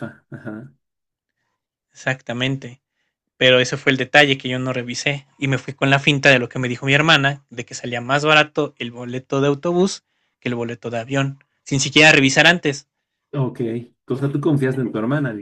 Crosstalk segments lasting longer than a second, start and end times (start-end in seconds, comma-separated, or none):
none